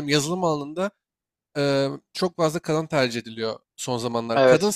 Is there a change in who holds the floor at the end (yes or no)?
no